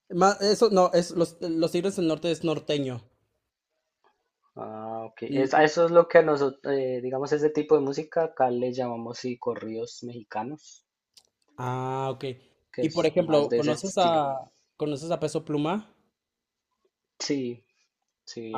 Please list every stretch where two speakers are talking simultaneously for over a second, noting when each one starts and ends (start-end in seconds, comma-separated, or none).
12.8-14.2